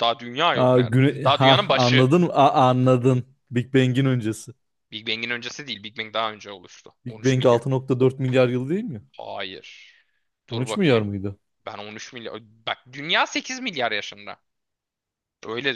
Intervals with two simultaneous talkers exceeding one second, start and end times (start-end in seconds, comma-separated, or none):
0.5-2.0